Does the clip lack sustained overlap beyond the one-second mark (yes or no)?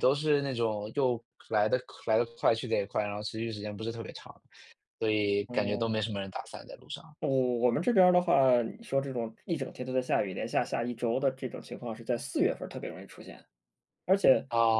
yes